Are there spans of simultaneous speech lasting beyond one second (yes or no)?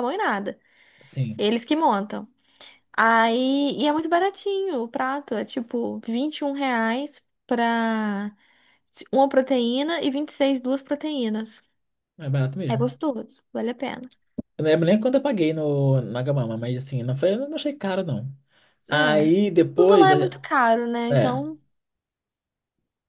yes